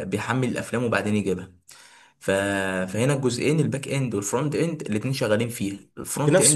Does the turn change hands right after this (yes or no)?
yes